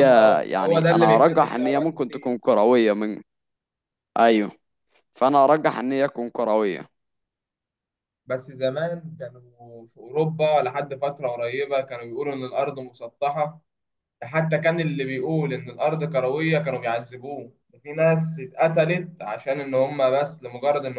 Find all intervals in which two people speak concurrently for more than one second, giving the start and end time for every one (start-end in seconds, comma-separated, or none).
0.5-2.4